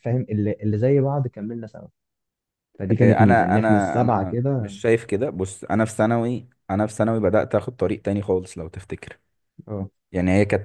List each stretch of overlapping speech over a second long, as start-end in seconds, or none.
3.0-4.8